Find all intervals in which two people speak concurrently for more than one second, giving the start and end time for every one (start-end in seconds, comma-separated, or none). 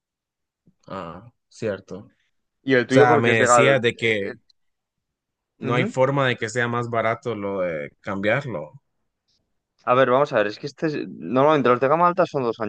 2.9-4.3